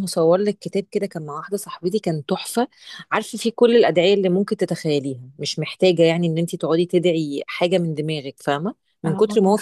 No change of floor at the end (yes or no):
yes